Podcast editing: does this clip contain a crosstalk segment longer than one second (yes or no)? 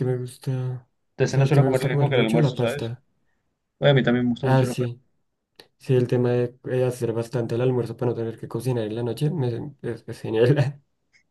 yes